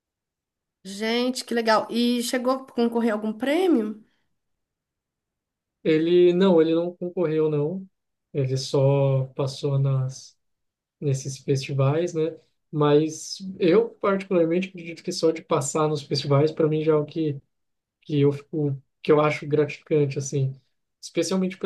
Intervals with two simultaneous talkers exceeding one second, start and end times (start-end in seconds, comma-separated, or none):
none